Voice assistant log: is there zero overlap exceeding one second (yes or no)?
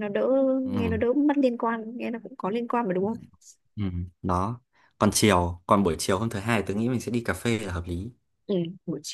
yes